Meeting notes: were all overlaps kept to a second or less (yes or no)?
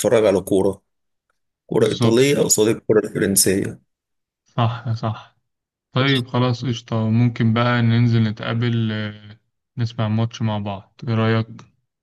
yes